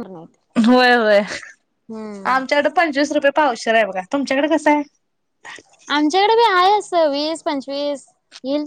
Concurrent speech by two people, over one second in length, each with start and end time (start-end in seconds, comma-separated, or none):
none